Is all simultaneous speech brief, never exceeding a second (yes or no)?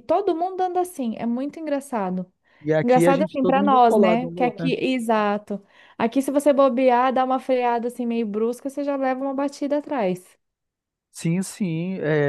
no